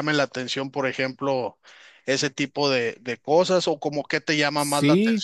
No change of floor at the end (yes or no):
no